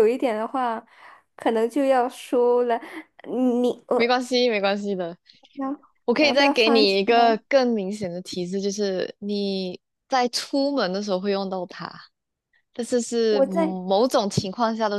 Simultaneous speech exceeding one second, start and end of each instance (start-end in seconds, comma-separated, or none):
6.2-7.4